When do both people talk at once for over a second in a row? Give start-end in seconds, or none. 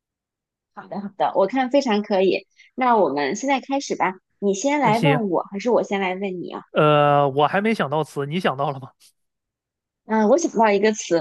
none